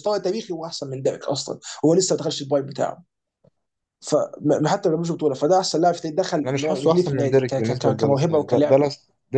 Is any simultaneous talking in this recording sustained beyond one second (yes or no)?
yes